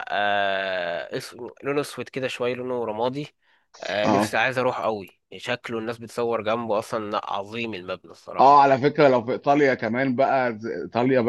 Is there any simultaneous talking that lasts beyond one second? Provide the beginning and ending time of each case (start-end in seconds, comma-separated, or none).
none